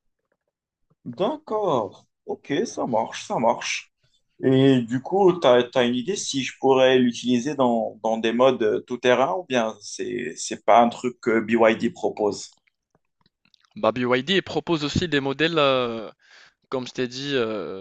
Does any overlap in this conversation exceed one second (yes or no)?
no